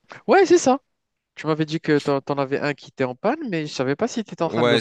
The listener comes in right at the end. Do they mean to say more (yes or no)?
yes